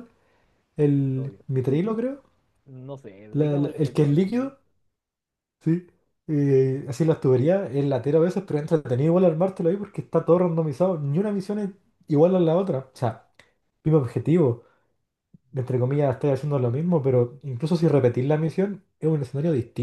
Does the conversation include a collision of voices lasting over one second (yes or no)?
yes